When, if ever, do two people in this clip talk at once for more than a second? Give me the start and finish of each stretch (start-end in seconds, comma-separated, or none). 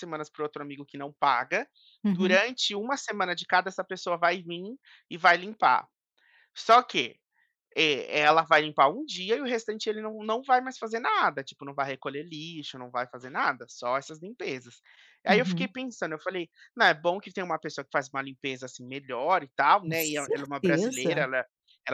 19.8-21.3